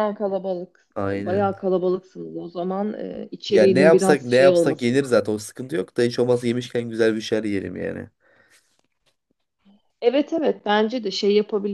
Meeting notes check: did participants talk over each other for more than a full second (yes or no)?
yes